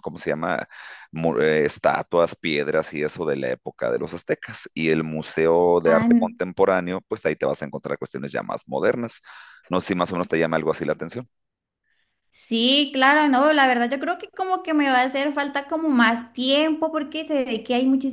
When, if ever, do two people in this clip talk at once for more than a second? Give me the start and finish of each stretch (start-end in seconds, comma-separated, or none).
none